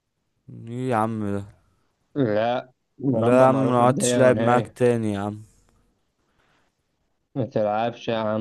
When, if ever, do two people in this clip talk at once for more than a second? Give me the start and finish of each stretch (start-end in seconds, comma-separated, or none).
3.2-4.8